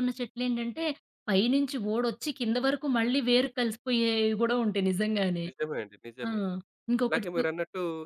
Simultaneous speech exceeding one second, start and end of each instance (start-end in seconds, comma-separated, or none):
none